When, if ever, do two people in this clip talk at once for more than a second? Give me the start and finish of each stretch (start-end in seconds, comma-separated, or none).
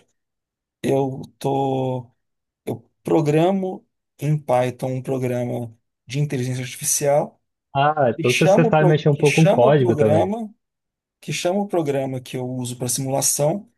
8.1-10.3